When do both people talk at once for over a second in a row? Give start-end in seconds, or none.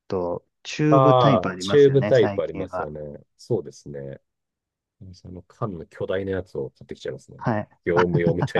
0.9-2.9